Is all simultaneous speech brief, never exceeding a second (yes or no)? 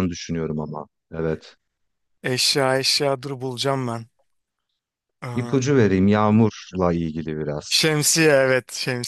yes